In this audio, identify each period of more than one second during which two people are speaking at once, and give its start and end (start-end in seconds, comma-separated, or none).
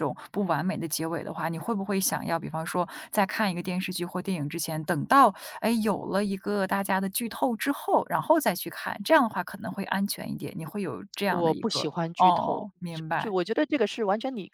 11.2-13.3